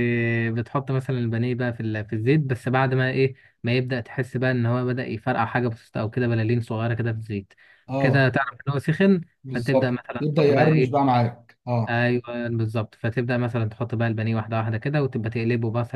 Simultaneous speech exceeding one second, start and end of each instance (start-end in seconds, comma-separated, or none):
9.4-10.9